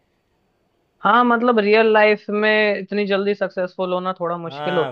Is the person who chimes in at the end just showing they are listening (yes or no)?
no